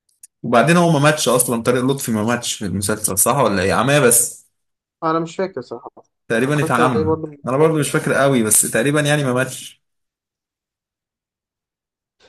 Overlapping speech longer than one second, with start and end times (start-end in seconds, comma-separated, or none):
6.4-8.1